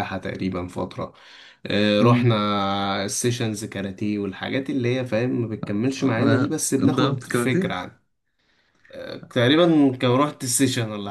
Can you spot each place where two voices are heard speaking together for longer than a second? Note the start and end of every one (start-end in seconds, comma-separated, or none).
6.0-7.8